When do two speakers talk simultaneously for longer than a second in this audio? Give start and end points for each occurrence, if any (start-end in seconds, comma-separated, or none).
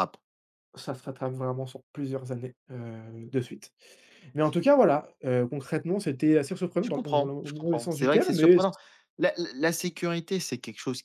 6.8-8.6